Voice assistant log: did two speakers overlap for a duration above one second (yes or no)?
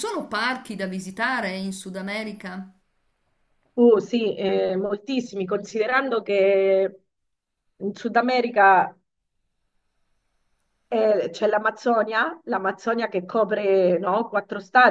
no